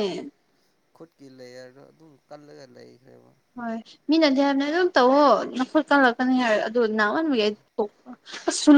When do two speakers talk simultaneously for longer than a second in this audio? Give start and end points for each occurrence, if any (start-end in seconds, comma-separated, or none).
none